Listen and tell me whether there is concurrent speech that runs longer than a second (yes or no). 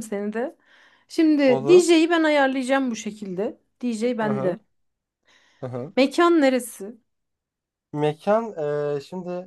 no